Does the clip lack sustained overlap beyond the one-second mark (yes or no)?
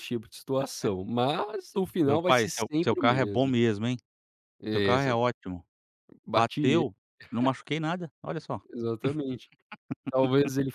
no